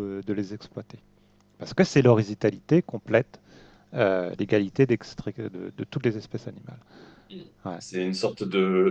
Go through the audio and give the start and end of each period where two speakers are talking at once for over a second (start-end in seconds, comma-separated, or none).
none